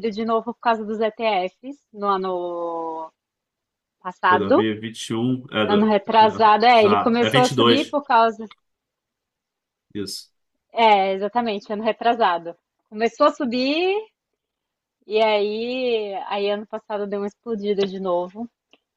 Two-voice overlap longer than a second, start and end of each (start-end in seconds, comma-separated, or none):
5.7-8.0